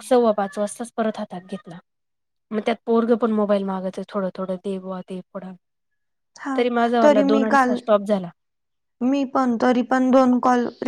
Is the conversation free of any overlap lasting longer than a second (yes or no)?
yes